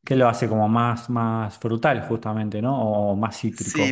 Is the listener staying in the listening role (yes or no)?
no